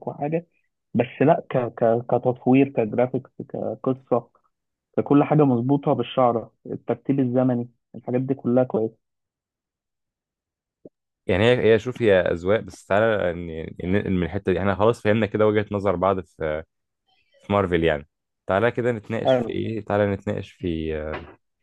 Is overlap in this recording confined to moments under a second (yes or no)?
yes